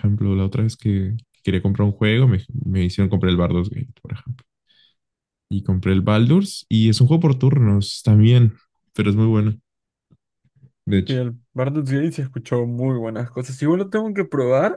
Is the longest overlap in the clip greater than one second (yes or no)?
no